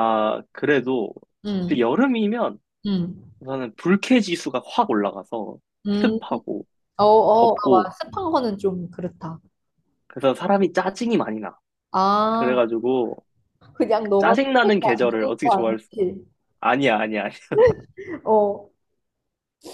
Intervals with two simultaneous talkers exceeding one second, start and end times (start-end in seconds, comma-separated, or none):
14.2-15.9